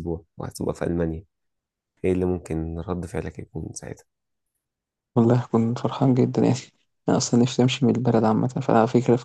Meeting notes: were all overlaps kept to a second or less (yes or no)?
yes